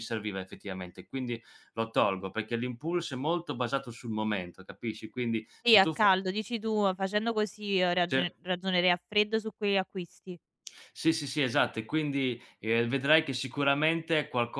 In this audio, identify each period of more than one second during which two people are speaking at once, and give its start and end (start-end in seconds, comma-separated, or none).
none